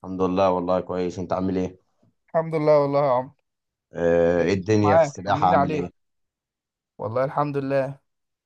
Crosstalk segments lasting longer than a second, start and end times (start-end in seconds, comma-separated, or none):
4.4-5.9